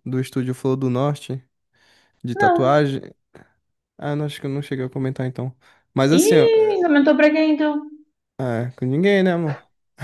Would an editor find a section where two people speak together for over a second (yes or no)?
no